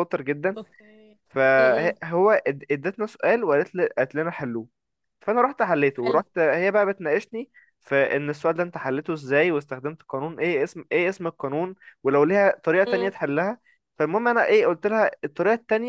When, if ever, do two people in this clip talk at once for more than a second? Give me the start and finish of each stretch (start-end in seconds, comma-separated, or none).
none